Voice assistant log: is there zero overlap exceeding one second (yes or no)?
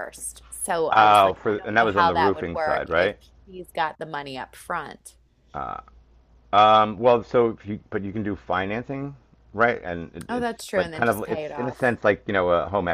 no